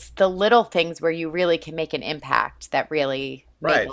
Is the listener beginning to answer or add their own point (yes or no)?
yes